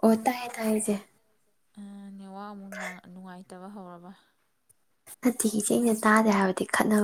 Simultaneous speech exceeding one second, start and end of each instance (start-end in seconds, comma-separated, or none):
none